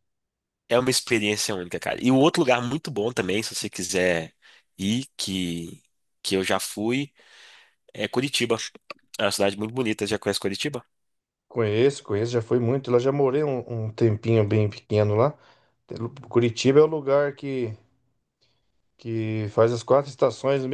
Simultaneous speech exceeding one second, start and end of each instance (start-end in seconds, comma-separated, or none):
none